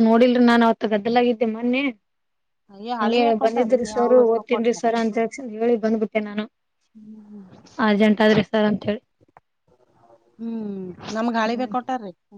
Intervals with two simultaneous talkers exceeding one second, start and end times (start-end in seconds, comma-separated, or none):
3.0-4.8